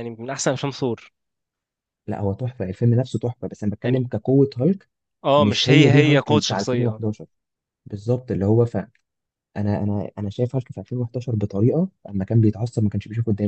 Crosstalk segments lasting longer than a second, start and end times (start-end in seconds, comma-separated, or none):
5.4-7.0